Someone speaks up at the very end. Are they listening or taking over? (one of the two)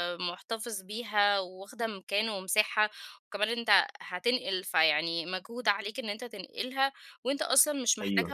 listening